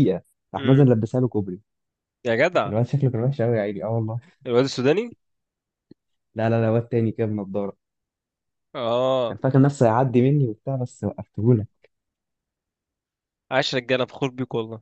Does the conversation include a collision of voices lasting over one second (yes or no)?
no